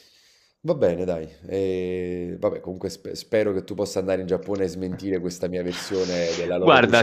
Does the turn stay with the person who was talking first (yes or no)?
no